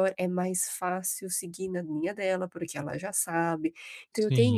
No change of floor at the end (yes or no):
yes